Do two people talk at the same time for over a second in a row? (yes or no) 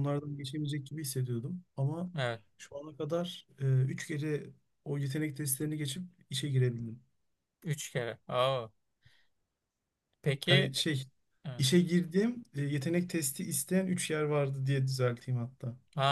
no